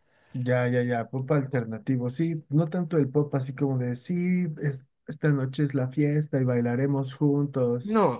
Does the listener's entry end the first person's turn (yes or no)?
no